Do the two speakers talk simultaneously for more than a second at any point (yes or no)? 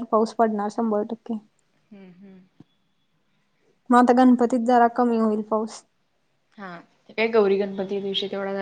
no